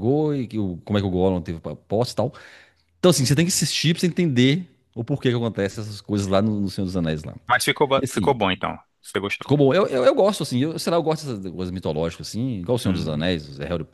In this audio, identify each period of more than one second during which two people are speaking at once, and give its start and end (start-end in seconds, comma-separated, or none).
none